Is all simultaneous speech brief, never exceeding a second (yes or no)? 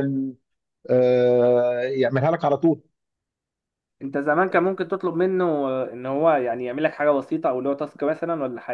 yes